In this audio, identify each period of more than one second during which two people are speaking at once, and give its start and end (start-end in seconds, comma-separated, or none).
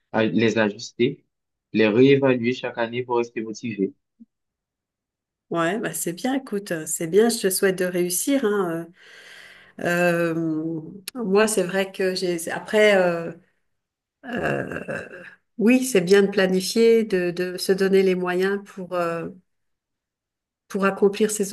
none